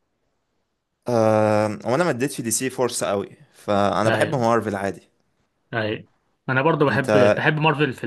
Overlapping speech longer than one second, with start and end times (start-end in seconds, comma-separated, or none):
none